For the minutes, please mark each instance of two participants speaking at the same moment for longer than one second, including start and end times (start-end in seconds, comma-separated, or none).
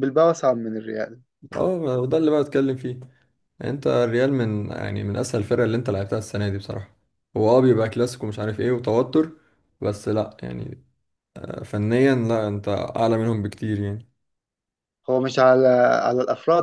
none